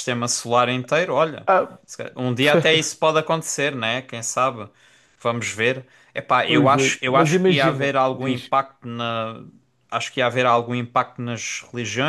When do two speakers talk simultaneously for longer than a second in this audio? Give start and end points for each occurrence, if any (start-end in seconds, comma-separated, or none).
6.5-8.5